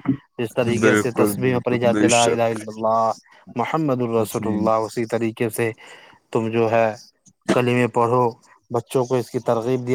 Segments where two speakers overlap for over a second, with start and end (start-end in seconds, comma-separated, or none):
0.8-2.5